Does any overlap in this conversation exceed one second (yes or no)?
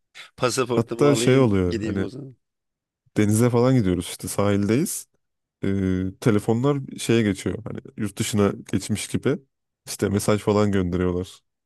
yes